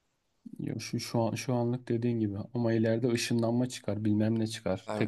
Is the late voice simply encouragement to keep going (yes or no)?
yes